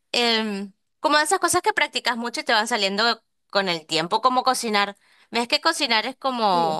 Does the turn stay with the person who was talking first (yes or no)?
yes